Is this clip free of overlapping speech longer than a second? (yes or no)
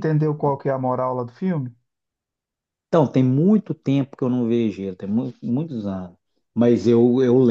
yes